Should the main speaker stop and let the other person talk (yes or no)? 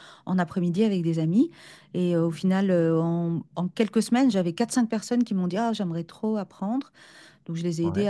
no